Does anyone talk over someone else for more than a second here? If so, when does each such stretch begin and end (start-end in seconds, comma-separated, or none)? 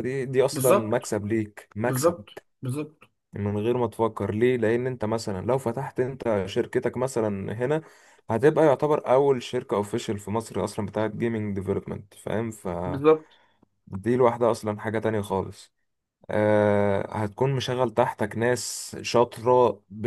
none